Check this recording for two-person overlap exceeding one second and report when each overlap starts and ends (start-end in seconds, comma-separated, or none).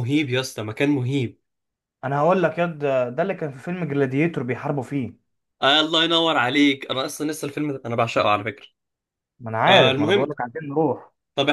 none